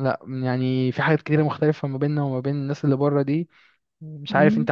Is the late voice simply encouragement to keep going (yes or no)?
no